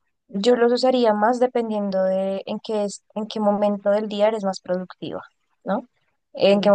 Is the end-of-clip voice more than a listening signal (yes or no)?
no